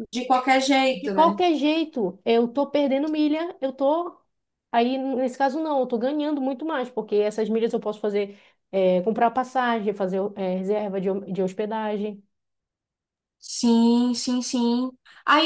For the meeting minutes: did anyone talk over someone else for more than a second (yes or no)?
no